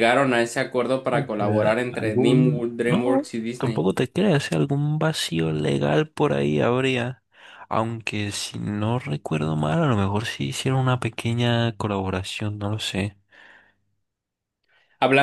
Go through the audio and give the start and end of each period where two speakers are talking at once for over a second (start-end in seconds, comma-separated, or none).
1.1-3.9